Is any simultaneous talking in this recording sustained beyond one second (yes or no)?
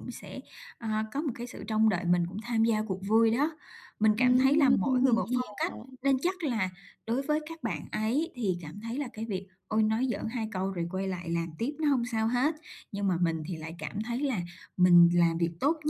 yes